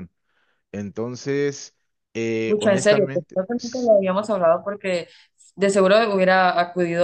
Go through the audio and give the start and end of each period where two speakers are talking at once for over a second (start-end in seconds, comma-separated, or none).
2.5-3.9